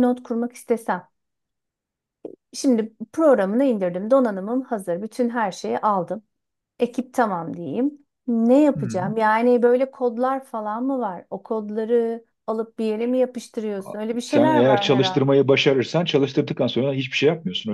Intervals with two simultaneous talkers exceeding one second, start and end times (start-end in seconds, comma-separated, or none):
13.8-15.3